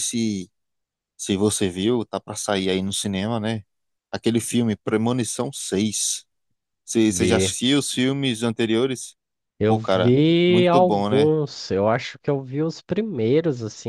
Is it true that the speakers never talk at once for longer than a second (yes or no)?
no